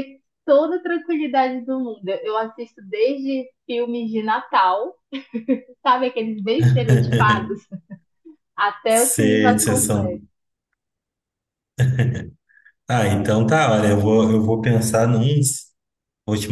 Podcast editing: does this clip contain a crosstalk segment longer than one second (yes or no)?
yes